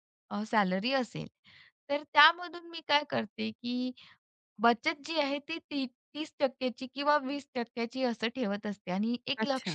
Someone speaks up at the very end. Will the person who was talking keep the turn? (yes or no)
yes